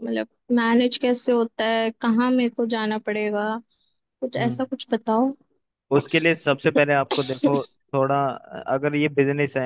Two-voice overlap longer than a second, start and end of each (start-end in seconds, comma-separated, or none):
none